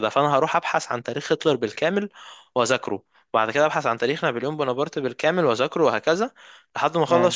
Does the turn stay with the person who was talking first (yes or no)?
yes